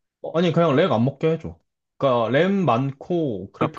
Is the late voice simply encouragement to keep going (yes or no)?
no